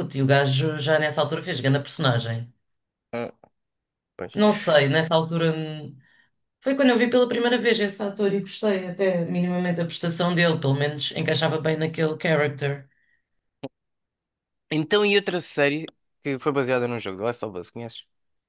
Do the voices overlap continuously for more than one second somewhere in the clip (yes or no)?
no